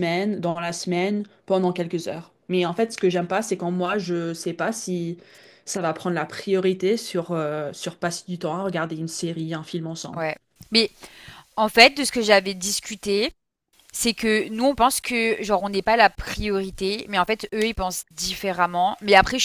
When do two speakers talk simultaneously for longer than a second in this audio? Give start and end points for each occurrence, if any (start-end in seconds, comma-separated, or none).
none